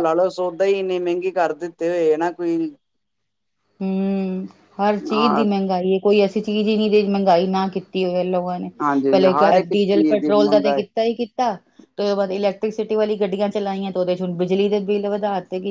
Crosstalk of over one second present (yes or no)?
yes